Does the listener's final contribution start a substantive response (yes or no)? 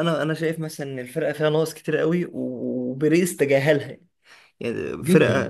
no